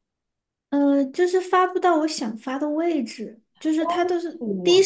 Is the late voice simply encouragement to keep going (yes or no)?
yes